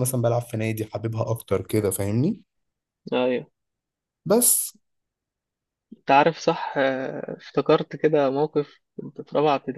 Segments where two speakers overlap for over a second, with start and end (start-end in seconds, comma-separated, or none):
none